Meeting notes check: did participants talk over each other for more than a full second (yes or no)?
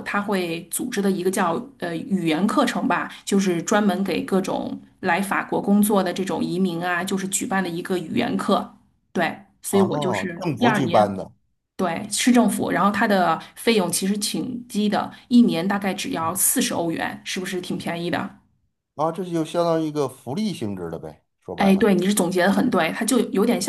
yes